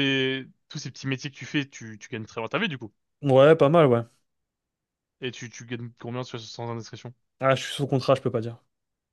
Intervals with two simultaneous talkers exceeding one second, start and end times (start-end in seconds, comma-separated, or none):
none